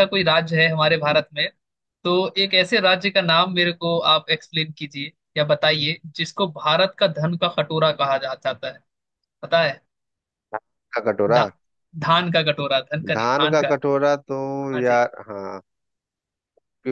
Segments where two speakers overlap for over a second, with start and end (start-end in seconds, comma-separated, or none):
none